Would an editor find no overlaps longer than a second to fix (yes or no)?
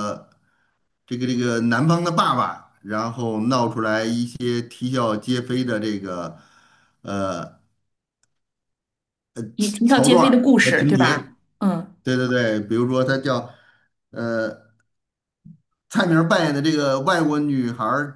no